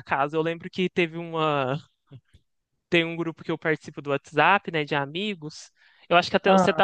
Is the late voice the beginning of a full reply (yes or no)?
no